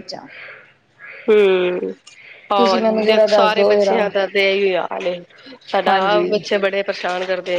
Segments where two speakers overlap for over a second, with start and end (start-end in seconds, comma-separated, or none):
2.6-4.1